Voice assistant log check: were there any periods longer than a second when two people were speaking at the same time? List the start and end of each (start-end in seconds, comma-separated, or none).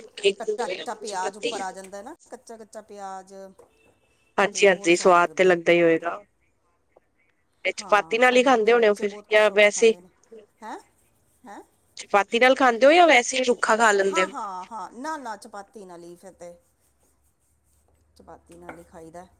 7.8-9.9